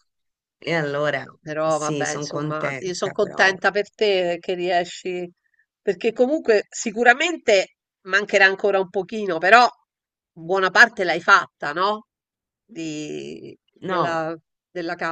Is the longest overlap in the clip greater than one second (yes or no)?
yes